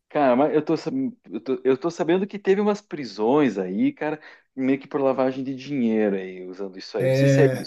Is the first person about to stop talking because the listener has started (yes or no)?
yes